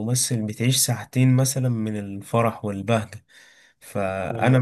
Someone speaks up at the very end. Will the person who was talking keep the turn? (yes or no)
yes